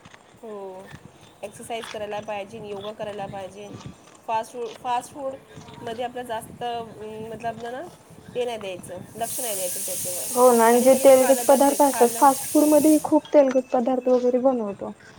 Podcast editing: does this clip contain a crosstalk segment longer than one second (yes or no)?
yes